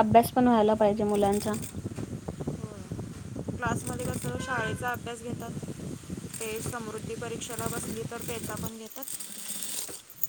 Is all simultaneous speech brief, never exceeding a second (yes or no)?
yes